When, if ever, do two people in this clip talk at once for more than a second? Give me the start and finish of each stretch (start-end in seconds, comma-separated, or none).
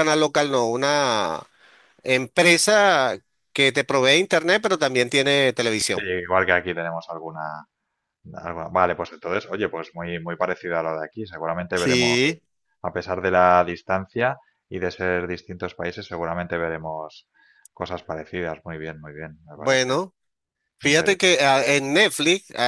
none